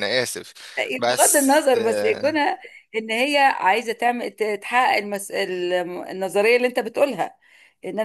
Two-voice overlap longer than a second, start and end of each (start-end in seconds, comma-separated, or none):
1.1-2.4